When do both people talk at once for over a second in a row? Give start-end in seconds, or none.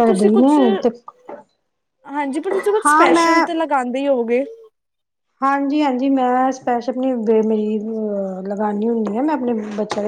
none